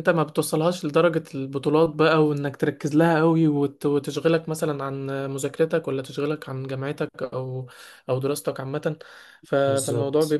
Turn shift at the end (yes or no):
no